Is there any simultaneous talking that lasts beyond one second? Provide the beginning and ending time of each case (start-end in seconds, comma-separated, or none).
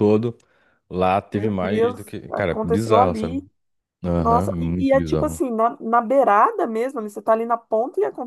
1.3-3.4, 4.2-5.4